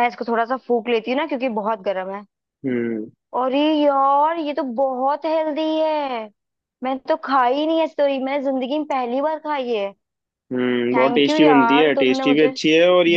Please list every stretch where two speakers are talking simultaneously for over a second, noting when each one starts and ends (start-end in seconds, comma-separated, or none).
10.9-12.6